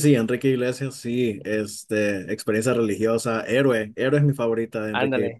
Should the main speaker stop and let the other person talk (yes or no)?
yes